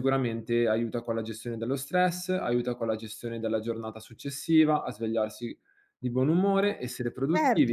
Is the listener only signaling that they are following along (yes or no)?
no